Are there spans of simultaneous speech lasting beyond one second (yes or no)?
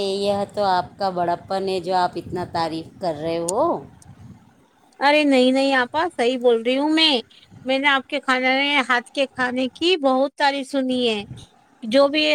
no